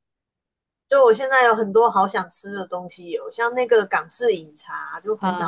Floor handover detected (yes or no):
no